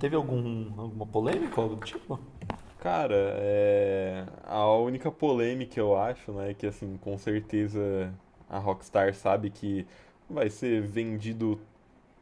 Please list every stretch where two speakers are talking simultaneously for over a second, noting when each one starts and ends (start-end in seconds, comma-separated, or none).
none